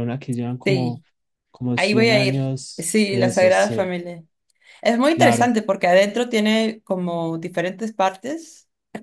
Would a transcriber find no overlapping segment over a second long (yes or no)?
no